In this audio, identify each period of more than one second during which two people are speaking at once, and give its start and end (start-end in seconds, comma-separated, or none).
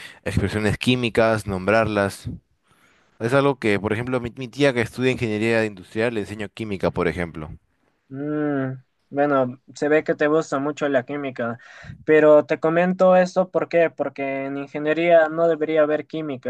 none